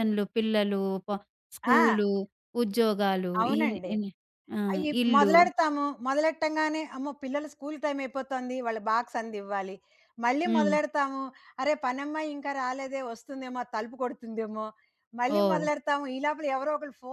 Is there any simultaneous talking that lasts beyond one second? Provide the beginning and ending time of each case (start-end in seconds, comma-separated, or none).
none